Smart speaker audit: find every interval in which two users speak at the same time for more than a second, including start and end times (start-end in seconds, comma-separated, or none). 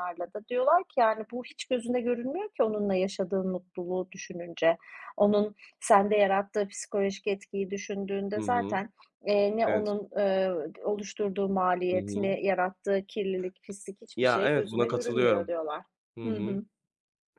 14.2-15.5